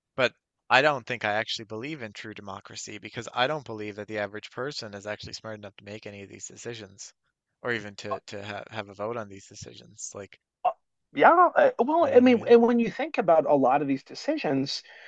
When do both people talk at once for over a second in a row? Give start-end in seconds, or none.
none